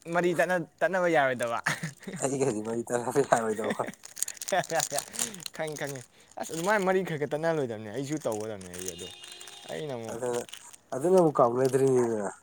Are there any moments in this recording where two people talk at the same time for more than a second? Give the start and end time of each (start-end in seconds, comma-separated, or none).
none